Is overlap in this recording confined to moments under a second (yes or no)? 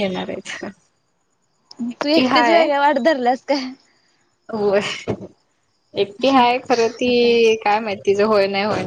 yes